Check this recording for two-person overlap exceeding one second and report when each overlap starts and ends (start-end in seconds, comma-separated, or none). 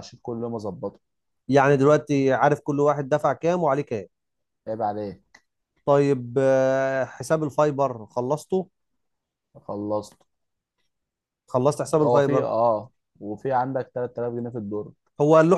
none